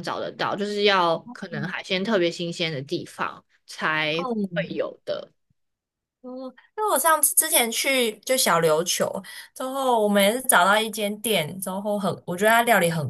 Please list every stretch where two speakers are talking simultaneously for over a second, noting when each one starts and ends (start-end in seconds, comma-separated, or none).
none